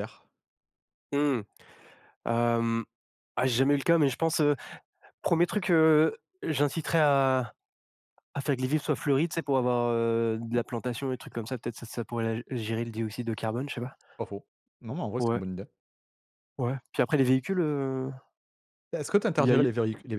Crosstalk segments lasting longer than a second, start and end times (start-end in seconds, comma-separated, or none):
none